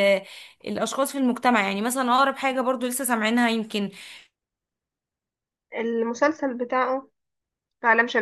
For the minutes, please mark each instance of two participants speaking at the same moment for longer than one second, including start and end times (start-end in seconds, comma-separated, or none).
none